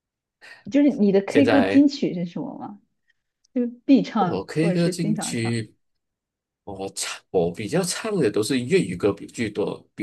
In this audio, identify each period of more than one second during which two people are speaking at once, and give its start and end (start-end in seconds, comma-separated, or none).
4.2-5.6